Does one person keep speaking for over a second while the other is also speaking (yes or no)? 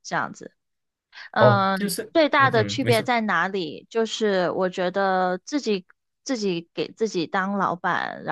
yes